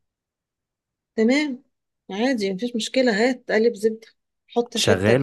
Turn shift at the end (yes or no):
no